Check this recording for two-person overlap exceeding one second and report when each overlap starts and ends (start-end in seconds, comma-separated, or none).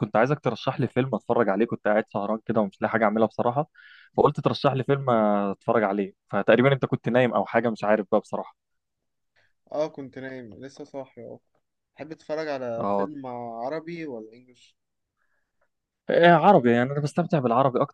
none